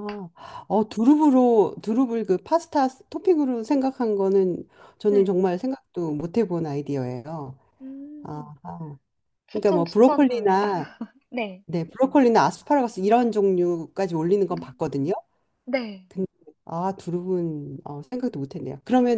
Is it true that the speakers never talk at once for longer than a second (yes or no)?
no